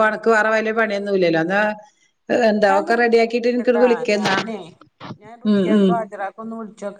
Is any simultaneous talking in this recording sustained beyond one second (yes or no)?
yes